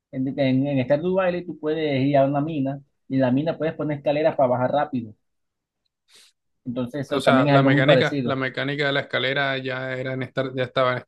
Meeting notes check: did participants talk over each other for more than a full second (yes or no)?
yes